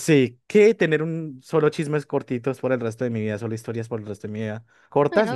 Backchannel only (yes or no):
yes